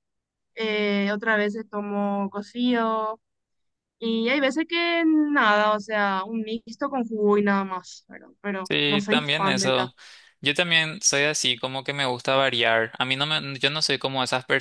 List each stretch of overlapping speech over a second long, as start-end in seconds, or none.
8.7-9.9